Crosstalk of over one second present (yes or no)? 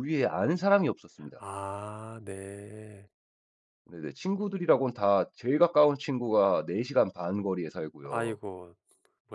no